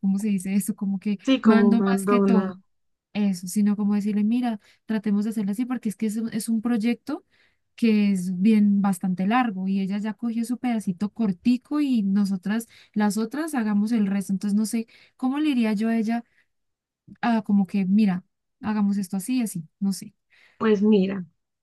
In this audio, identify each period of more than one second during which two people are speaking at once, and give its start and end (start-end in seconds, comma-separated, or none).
1.2-2.6